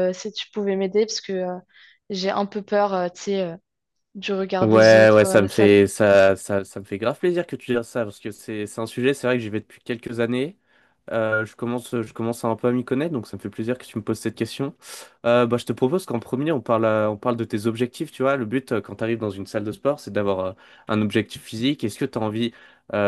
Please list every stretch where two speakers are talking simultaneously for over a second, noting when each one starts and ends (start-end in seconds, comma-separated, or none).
4.6-5.8